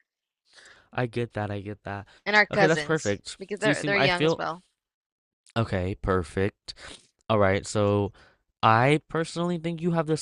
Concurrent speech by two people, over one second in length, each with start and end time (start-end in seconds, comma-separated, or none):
2.5-4.4